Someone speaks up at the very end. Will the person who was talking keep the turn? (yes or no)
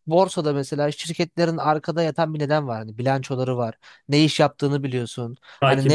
yes